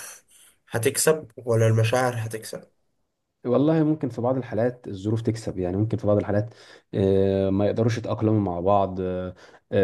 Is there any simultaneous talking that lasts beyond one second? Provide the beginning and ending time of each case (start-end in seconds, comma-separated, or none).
none